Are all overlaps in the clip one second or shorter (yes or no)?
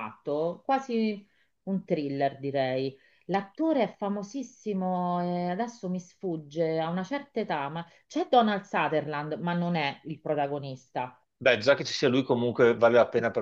yes